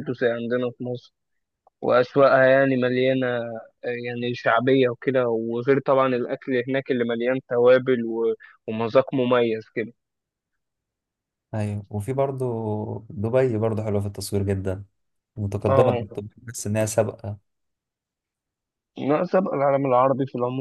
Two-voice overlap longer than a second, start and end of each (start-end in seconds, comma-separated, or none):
none